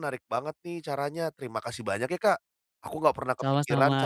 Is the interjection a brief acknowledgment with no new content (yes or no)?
yes